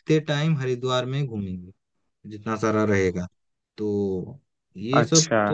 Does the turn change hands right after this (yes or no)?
yes